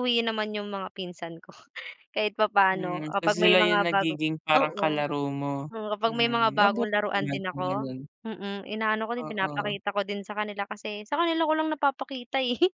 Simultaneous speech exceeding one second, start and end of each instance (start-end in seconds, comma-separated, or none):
2.7-5.0, 6.1-7.9